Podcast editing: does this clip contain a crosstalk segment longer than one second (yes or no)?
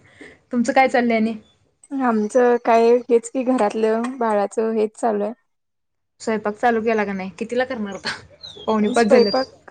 no